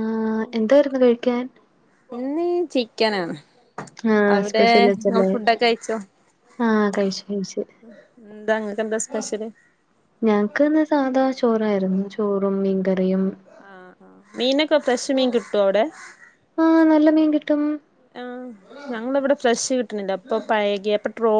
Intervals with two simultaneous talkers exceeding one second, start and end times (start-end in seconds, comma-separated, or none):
none